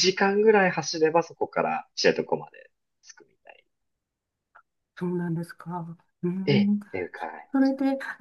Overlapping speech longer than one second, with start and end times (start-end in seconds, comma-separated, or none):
none